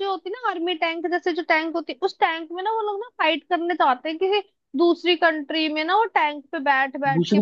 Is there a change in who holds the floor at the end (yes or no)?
yes